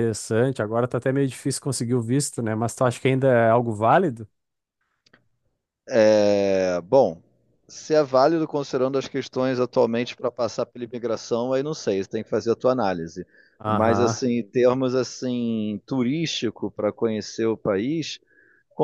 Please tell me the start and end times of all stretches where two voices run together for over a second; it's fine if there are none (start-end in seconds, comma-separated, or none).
none